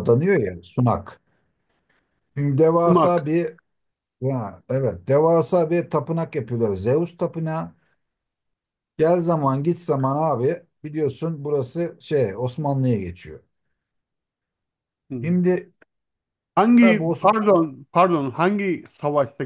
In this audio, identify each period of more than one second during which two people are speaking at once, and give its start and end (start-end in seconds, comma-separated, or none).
none